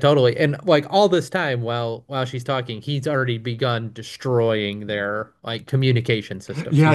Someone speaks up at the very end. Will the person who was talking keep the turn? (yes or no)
no